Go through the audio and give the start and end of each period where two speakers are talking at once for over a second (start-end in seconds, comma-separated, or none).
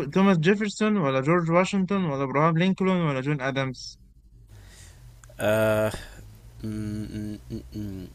none